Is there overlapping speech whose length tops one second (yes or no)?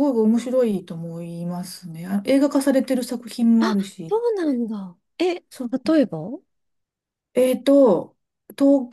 no